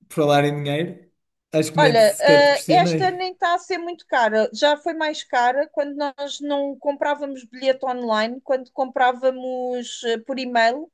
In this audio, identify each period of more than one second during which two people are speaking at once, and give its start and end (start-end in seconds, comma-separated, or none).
1.8-3.3